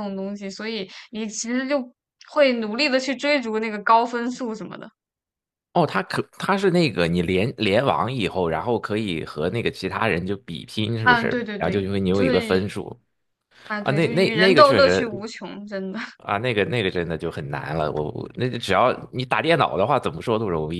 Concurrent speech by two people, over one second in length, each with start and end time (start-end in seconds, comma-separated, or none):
11.0-12.7, 13.8-15.1